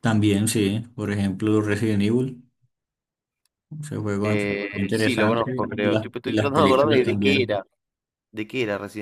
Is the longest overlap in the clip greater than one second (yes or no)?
yes